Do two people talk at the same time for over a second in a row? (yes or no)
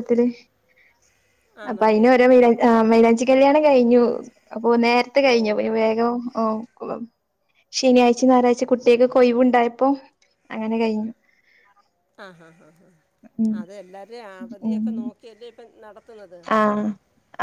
no